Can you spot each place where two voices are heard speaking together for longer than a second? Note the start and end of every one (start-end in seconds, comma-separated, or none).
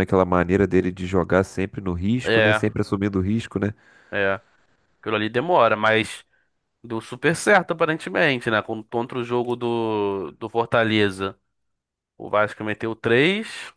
none